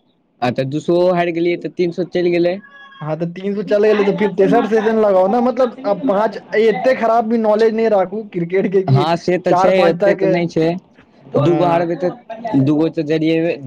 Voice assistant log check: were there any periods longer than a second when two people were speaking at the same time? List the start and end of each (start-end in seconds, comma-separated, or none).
3.7-7.2